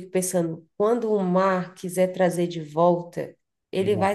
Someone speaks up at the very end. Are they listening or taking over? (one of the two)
listening